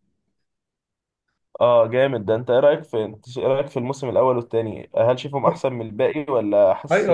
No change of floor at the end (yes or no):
no